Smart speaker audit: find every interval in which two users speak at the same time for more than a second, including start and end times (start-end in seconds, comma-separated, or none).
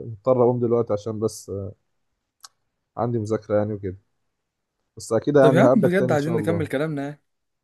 5.4-6.6